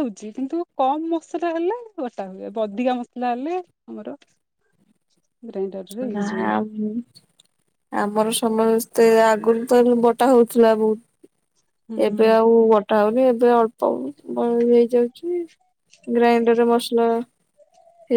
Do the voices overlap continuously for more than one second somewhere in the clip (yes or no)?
no